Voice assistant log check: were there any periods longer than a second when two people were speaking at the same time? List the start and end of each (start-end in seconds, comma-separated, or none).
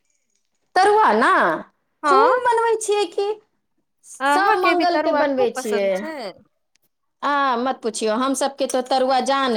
4.4-5.9